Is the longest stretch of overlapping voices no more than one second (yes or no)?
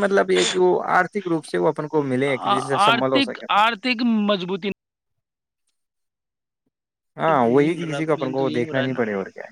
no